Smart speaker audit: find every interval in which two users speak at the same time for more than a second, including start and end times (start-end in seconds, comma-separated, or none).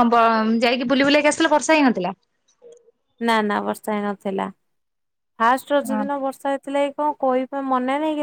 none